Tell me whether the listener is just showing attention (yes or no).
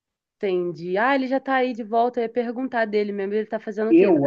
no